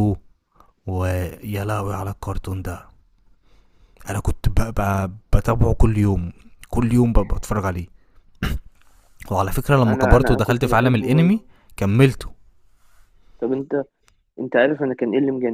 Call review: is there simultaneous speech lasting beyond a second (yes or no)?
yes